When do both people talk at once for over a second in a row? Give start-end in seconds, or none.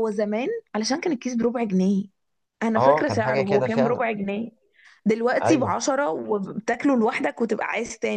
2.8-4.0